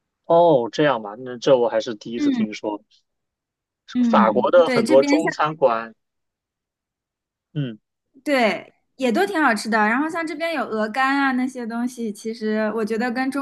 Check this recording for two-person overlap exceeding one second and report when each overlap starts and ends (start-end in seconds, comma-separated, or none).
4.1-5.3